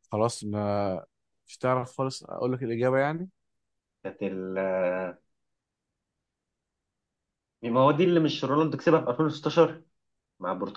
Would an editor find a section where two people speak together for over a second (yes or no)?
no